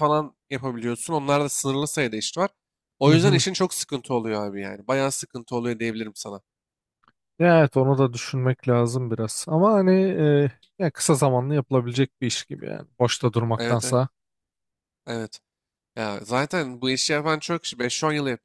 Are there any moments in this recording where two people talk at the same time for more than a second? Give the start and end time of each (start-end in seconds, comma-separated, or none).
none